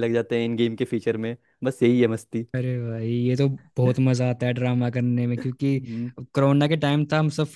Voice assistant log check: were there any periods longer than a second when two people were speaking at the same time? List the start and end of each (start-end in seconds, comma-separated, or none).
none